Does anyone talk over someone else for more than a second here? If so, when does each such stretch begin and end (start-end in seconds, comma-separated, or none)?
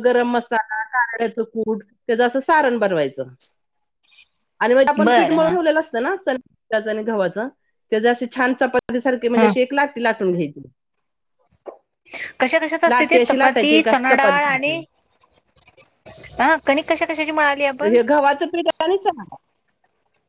12.9-14.8